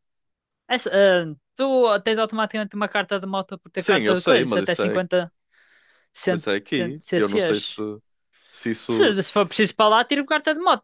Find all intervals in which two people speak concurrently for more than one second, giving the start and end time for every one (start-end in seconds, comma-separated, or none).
3.8-5.0, 6.2-7.8